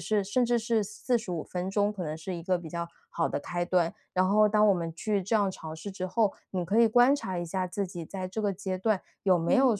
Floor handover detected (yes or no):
no